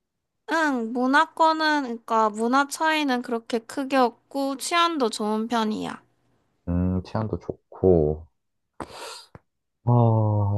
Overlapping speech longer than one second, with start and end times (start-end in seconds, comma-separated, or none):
none